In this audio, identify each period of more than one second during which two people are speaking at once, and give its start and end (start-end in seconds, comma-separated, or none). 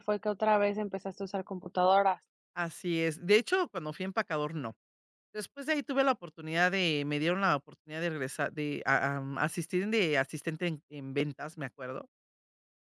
none